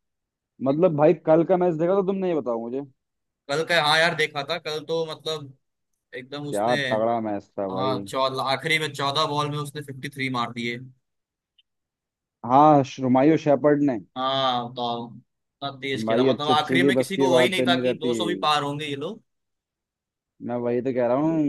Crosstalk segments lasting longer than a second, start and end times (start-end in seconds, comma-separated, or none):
16.1-18.1